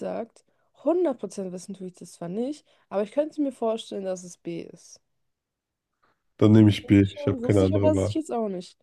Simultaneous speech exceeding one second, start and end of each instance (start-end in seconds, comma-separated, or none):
6.5-8.1